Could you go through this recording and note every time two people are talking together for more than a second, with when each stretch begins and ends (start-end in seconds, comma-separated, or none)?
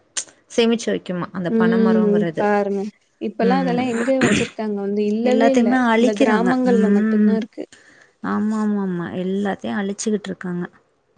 5.3-7.4